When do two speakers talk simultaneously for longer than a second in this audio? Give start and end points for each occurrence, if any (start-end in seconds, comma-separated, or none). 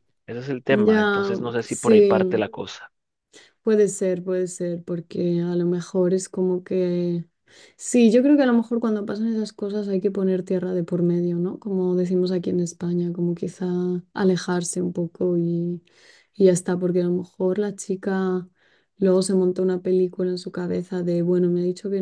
0.7-2.5